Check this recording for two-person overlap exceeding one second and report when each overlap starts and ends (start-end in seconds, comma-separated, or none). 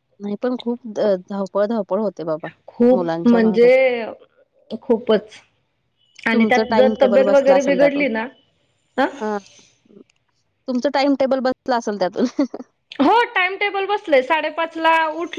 6.3-8.1